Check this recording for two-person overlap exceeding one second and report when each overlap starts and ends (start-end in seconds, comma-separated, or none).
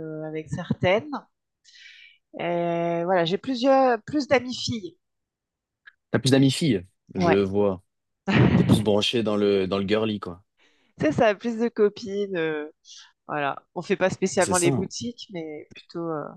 none